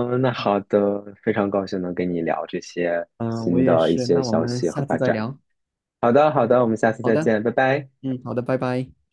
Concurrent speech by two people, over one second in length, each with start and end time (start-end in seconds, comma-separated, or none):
3.2-5.2